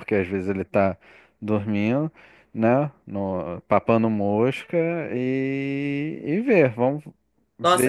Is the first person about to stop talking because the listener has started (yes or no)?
yes